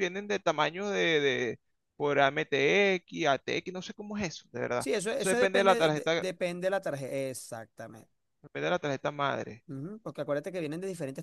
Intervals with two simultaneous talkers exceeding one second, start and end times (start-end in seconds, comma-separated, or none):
4.8-6.2